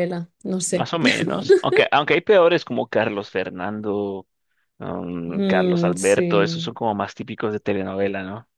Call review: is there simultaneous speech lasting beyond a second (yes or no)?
yes